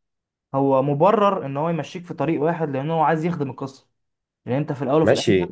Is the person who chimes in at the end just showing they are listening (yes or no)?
no